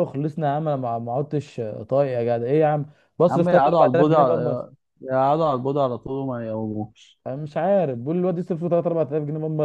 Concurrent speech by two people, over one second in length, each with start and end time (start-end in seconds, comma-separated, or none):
3.3-4.6